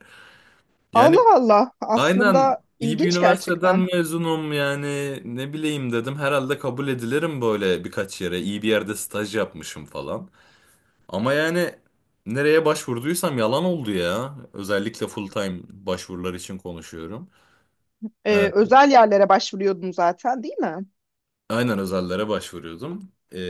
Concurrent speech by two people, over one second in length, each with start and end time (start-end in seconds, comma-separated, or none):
1.9-3.9